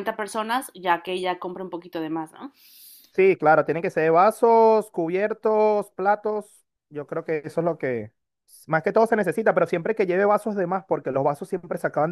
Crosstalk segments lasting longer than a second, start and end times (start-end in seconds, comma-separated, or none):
none